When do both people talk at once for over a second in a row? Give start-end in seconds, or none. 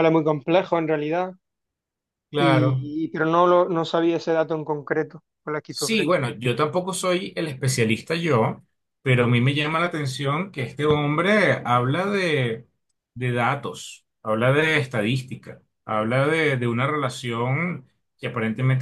none